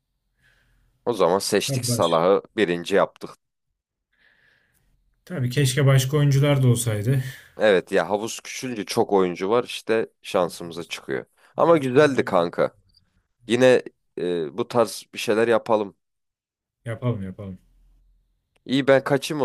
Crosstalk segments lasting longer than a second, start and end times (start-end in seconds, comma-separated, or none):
11.5-12.8